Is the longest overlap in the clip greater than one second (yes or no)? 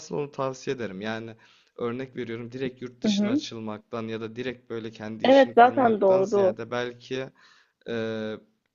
yes